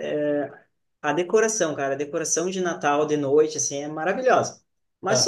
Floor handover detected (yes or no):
no